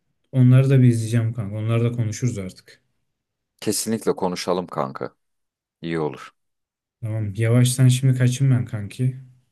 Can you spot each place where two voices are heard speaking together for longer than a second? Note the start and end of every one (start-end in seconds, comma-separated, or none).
none